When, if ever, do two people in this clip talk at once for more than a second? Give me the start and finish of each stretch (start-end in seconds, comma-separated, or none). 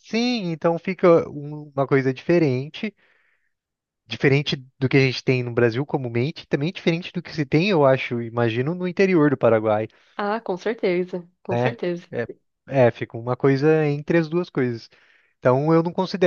none